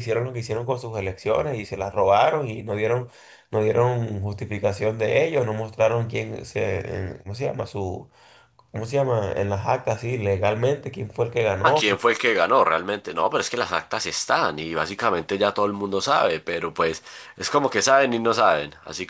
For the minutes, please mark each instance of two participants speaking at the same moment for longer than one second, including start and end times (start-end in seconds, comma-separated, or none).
none